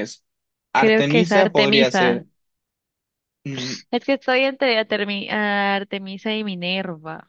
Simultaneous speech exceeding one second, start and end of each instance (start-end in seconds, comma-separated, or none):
0.8-2.2